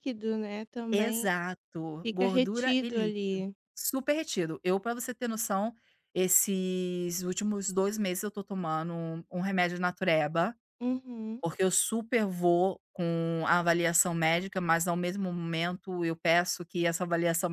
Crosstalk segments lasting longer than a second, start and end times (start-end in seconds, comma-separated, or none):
2.0-3.5